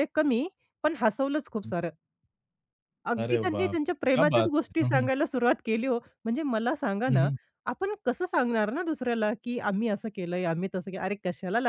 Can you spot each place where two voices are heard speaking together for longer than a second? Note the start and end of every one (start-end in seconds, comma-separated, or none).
3.2-5.1